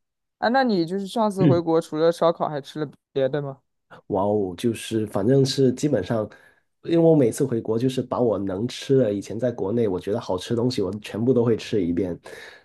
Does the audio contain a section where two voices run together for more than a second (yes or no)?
no